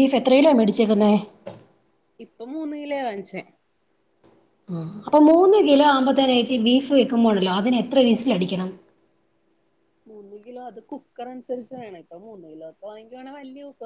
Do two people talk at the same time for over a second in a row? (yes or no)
no